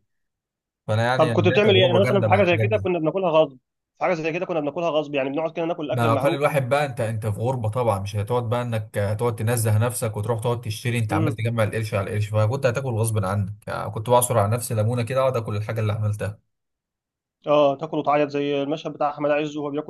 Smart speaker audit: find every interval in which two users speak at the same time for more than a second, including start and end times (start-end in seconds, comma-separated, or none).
1.1-2.9